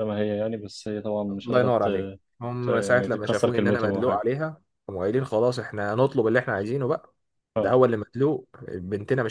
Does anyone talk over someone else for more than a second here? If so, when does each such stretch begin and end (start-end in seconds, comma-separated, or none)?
2.6-4.2